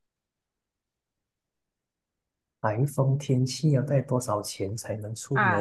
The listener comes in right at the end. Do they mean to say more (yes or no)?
yes